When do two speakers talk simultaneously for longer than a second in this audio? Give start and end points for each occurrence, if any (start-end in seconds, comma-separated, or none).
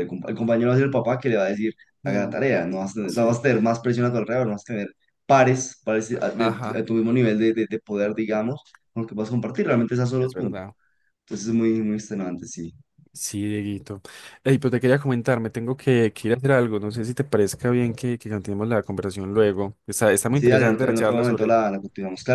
20.3-21.6